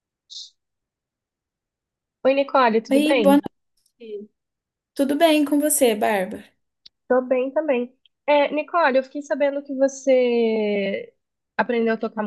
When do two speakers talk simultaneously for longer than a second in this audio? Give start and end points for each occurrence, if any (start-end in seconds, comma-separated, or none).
none